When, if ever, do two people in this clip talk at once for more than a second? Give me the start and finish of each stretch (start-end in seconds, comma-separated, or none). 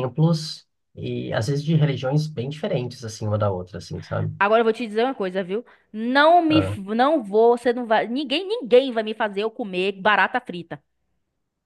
none